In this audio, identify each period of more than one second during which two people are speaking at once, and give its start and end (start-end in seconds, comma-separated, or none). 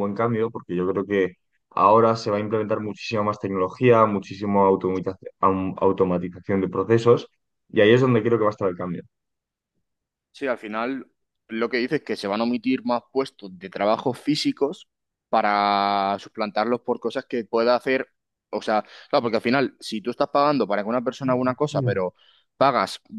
none